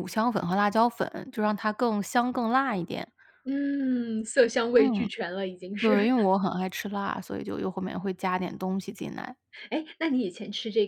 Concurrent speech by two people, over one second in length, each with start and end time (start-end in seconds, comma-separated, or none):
none